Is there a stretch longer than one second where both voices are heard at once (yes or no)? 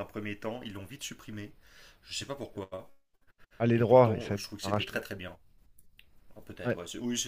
yes